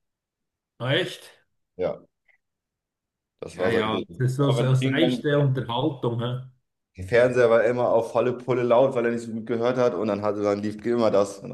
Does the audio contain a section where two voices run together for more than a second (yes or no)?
yes